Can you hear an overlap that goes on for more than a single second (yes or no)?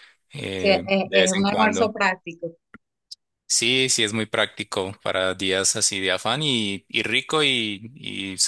yes